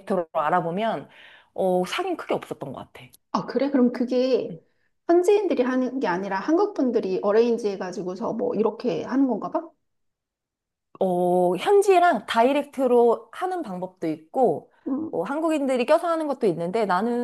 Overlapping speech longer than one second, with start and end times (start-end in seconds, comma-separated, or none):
none